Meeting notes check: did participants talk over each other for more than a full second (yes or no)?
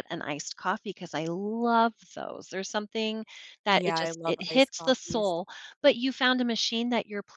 yes